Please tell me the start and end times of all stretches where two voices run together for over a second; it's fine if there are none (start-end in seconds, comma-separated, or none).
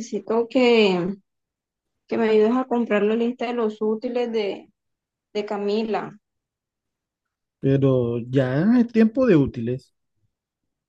none